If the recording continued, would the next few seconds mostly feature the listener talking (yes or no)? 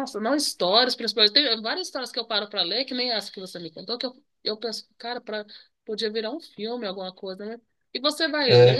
no